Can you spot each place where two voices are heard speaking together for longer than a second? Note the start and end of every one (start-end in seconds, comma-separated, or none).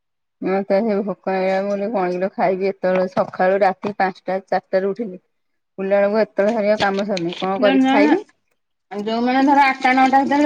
none